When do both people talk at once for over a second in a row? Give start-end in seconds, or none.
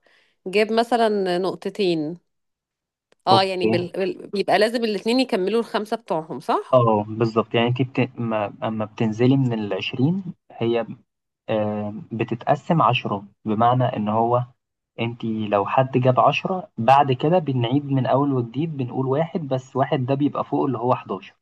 none